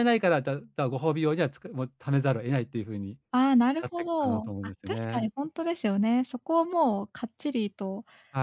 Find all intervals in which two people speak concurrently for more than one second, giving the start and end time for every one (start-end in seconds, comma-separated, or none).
3.8-5.3